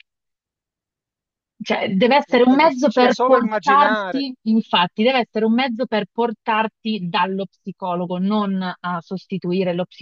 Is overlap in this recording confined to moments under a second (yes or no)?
no